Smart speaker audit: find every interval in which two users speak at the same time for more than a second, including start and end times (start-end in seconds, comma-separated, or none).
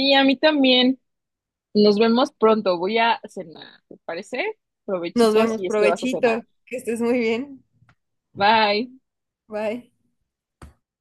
5.2-6.4